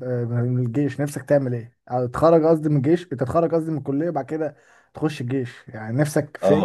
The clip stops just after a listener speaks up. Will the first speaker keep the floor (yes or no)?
no